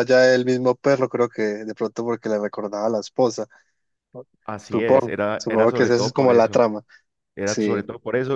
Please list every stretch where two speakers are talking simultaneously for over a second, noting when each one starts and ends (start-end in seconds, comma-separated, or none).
4.6-6.6